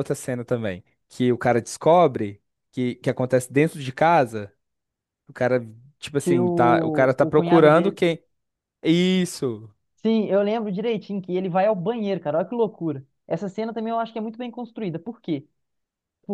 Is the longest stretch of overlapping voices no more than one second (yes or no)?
no